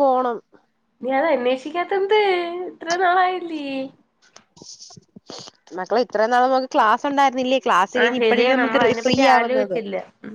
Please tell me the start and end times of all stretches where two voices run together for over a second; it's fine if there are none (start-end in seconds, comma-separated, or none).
8.0-9.8